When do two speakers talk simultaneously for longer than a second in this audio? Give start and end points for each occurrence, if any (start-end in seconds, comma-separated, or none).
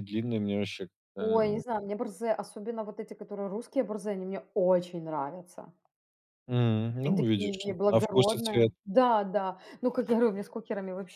7.0-8.7